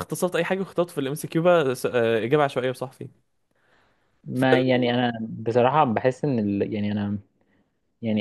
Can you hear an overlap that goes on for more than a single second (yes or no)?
no